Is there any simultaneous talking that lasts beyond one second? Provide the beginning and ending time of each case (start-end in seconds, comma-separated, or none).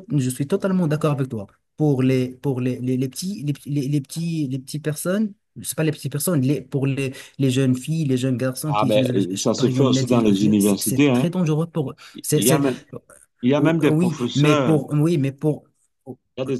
8.6-11.3, 13.6-14.9